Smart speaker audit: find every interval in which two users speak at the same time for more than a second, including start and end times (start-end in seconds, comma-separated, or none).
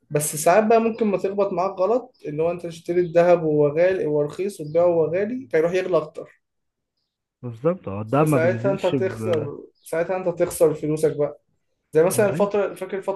8.2-9.5